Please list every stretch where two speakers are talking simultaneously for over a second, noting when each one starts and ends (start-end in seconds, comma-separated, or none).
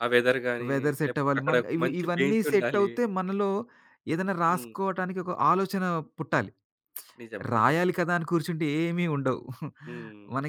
0.7-2.9